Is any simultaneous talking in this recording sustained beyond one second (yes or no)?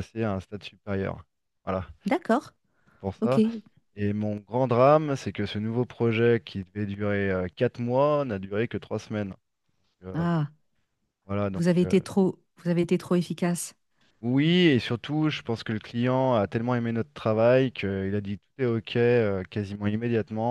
no